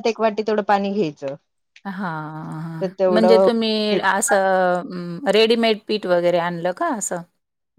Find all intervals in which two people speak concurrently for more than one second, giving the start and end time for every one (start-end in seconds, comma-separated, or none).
none